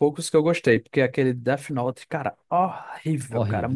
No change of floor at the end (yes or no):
no